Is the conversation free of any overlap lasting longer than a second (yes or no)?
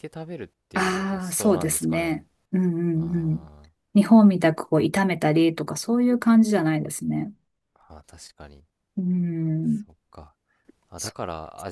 no